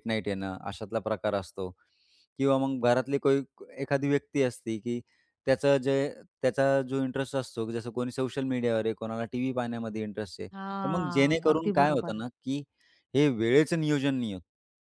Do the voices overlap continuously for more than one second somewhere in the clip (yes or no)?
yes